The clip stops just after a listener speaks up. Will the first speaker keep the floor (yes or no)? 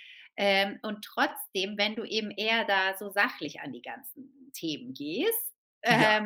yes